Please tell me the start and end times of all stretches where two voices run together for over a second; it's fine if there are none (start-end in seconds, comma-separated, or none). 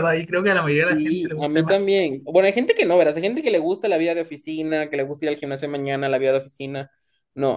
0.7-2.0